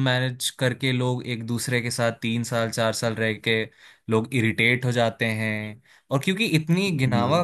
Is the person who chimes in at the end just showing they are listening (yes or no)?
yes